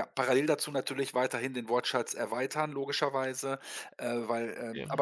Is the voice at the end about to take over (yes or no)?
no